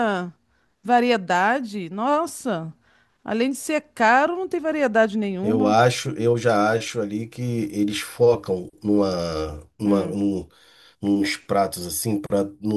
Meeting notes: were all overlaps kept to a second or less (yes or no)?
yes